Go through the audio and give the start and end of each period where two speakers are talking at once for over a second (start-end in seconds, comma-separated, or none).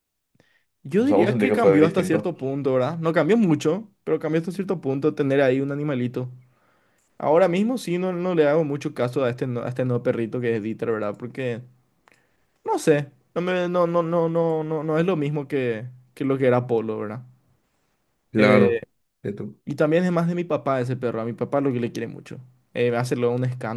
1.0-2.3